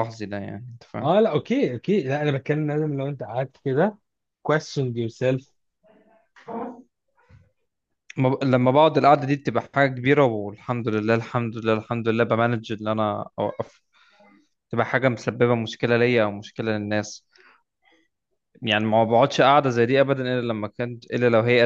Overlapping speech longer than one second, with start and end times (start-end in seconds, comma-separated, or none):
none